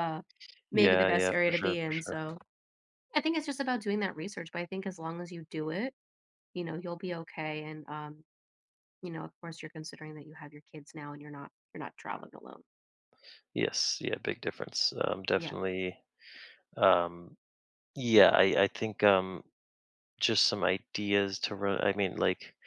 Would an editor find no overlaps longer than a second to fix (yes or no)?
no